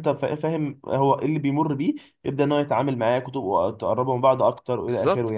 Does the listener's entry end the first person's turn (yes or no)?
yes